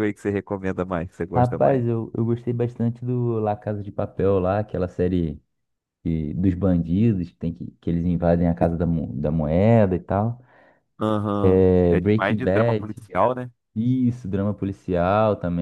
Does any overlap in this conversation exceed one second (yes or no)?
yes